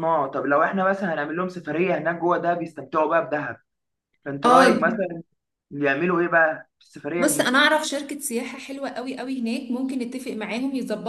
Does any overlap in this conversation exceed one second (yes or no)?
no